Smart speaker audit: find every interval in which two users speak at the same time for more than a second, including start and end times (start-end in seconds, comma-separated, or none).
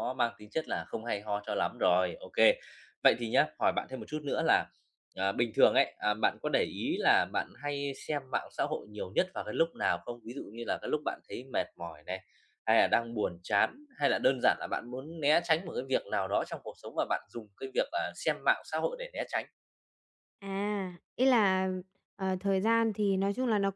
none